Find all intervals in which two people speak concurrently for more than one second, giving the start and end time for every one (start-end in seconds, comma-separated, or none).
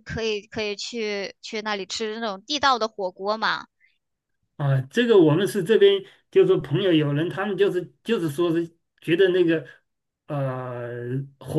none